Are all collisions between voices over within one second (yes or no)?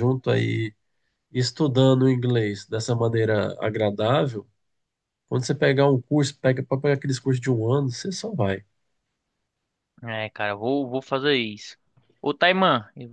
yes